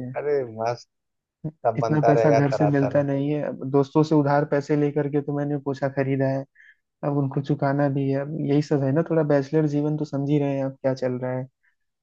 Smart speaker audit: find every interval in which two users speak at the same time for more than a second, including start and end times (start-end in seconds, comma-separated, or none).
1.8-3.0